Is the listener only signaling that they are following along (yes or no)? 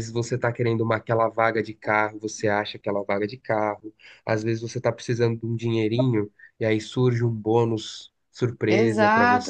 no